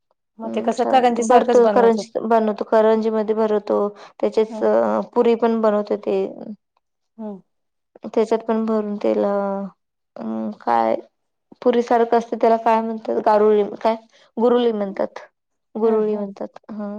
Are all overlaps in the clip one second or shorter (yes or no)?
no